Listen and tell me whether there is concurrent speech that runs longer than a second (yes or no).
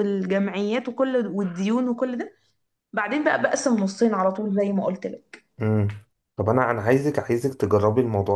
no